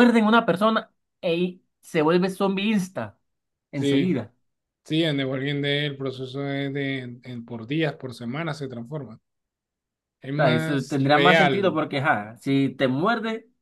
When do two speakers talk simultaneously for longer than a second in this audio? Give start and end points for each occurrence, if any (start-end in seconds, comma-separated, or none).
10.3-11.8